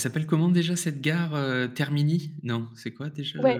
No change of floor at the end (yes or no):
no